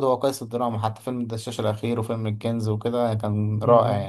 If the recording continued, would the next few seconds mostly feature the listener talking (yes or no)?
yes